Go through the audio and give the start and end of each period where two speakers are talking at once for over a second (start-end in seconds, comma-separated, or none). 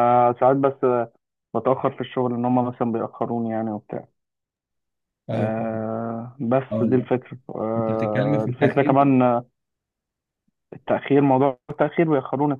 7.8-9.0